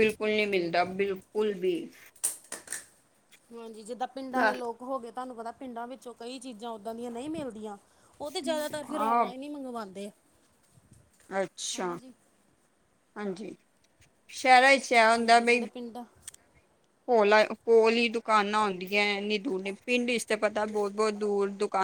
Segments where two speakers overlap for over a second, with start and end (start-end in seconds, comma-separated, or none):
none